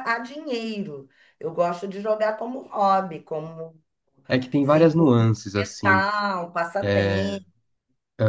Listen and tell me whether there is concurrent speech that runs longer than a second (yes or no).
yes